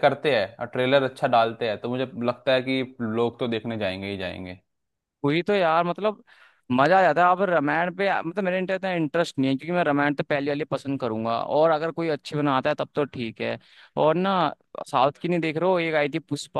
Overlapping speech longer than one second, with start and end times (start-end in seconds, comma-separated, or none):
none